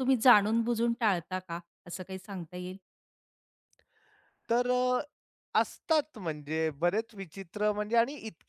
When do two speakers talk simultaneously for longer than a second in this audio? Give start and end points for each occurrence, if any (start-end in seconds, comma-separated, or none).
none